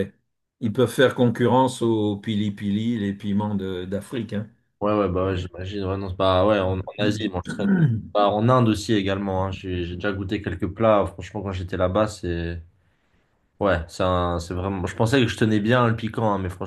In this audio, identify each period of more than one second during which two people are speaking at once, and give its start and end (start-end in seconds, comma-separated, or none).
6.6-8.1